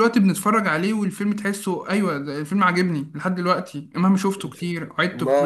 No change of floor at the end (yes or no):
no